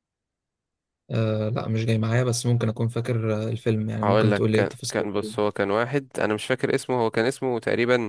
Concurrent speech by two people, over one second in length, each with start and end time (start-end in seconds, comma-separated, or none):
4.0-5.4